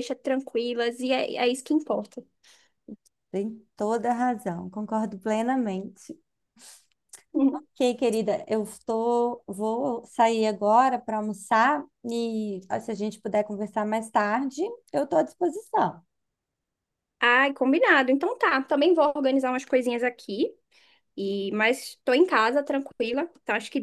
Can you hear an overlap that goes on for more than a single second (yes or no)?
no